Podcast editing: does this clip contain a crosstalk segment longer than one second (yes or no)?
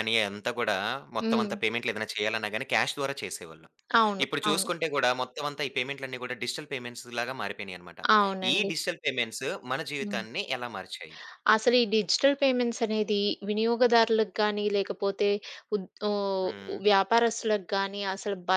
no